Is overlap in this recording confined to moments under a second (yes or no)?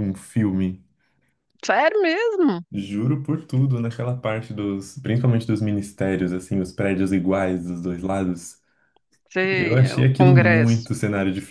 no